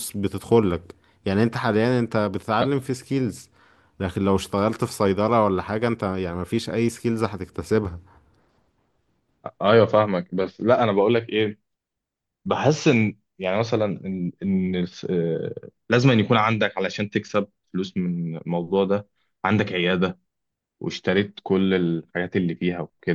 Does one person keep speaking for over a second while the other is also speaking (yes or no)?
no